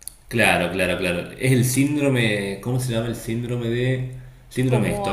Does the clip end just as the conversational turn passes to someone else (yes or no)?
yes